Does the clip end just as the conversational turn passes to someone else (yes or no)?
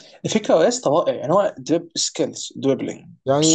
yes